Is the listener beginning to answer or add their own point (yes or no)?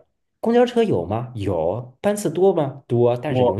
no